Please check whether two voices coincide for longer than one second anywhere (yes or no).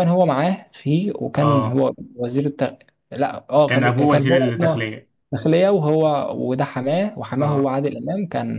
yes